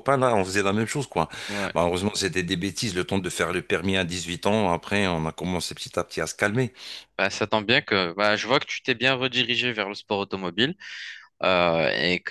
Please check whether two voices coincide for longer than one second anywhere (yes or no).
no